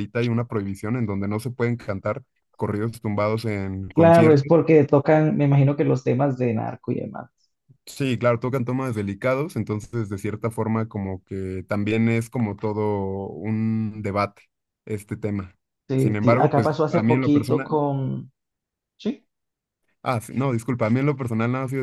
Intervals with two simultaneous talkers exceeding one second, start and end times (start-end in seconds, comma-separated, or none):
15.9-17.8